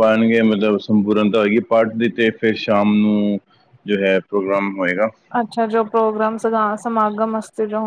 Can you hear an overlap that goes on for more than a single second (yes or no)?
no